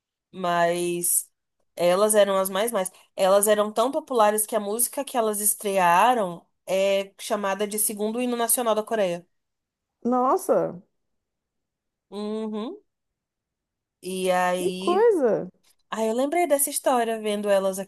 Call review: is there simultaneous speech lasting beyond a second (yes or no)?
no